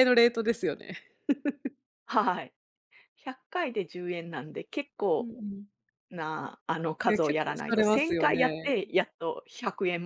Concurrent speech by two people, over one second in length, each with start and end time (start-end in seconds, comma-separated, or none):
7.1-8.7